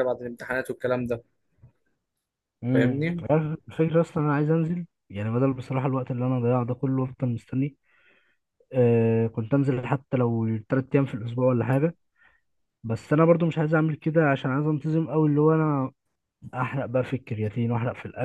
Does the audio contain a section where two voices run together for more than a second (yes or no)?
no